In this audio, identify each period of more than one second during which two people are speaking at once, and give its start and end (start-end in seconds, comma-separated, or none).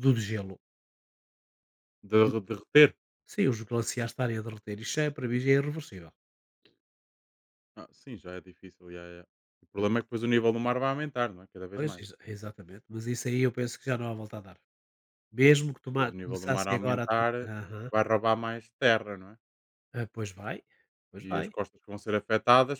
15.9-17.3